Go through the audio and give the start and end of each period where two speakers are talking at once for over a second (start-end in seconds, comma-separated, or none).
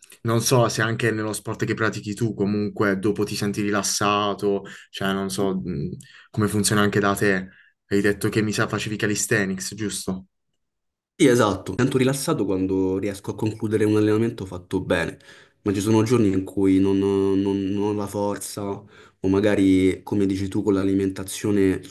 none